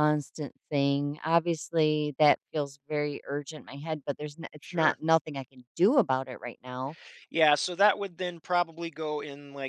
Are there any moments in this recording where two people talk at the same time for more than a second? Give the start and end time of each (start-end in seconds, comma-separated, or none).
none